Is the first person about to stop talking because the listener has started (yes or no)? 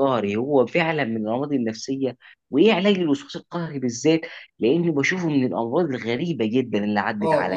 yes